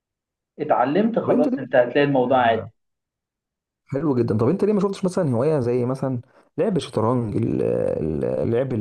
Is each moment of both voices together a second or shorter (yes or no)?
yes